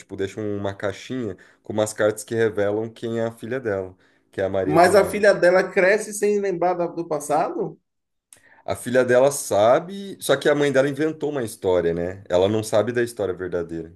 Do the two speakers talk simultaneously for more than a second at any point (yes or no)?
no